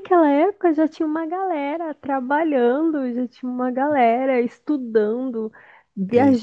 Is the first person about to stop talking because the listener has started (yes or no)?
no